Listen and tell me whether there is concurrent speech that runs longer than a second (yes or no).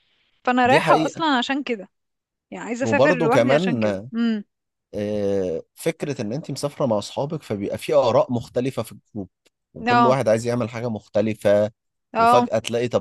yes